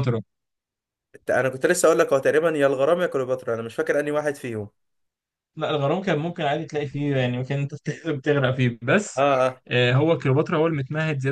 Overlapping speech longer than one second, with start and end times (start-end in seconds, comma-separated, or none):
none